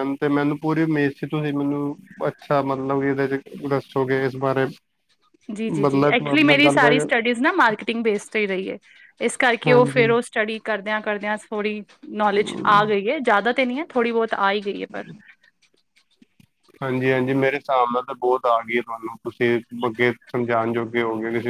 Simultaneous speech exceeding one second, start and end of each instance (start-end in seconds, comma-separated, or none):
5.8-7.1